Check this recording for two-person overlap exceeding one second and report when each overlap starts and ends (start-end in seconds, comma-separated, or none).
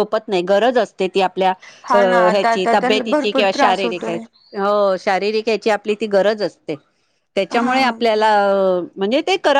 1.9-4.2